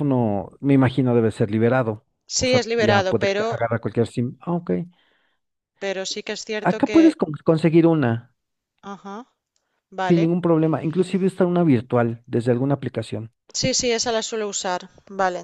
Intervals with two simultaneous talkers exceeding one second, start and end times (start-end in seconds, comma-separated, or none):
2.2-3.6